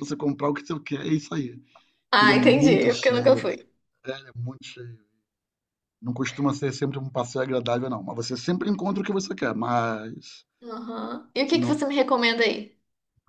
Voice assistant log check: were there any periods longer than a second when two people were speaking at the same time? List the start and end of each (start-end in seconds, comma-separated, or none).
2.1-3.5